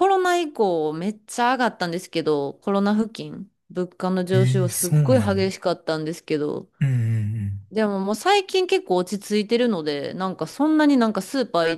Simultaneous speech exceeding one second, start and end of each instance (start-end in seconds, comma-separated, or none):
4.3-5.6